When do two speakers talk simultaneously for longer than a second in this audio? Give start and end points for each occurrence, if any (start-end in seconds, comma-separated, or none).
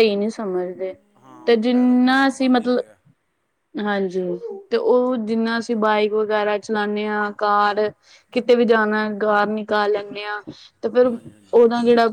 1.5-2.8